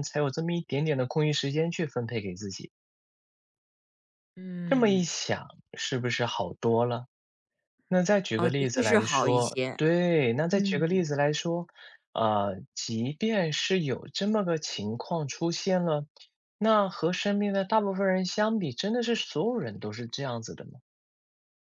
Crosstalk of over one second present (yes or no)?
yes